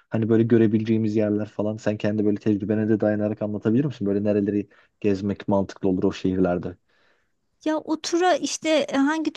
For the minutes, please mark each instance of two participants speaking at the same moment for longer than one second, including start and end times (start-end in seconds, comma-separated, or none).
none